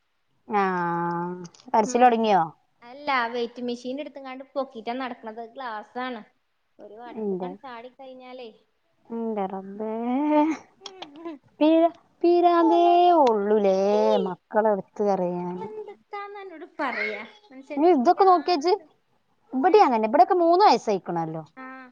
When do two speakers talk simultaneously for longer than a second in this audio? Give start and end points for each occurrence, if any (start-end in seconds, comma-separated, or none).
none